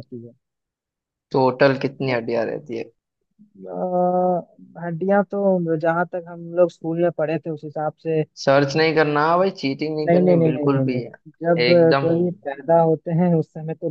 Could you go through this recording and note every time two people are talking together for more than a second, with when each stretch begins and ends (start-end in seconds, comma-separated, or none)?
10.1-12.1